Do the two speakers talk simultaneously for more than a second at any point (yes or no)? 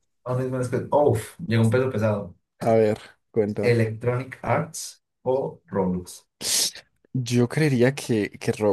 no